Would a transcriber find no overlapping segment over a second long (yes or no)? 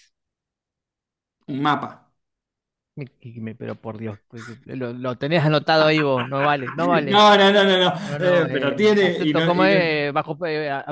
no